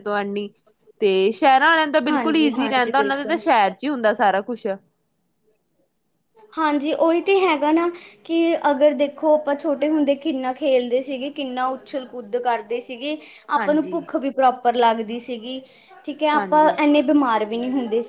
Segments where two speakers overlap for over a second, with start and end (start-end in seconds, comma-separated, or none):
2.1-3.4